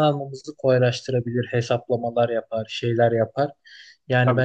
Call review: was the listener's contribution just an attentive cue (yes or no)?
yes